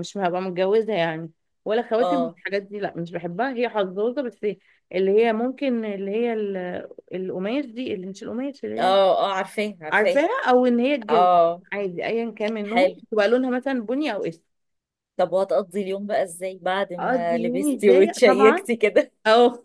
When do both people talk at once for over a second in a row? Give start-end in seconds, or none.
17.0-18.6